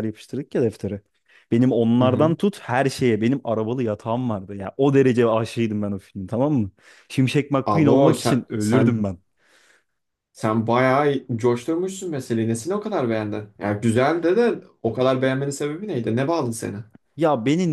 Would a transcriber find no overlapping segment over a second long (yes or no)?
no